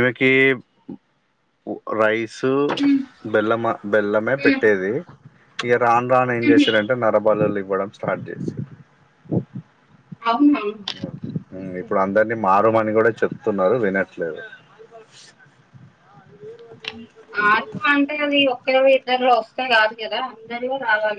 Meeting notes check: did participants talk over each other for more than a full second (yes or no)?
no